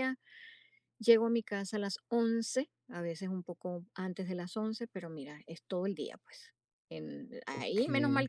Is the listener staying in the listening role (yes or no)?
yes